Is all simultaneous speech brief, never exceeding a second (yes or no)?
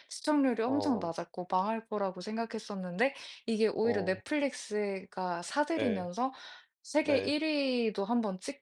yes